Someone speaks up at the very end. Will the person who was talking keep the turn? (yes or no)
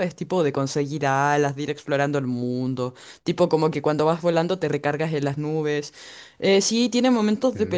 yes